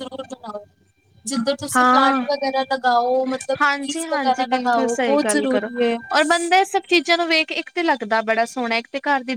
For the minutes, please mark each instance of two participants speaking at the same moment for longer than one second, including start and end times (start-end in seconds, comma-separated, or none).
none